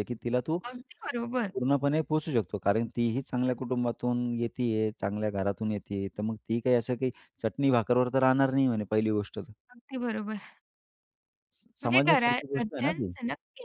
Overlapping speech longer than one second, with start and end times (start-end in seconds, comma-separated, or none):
11.8-13.1